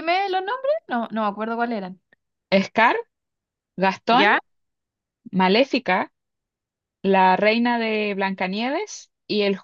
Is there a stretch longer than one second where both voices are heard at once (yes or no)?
no